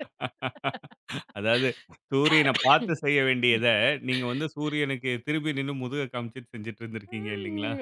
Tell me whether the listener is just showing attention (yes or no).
no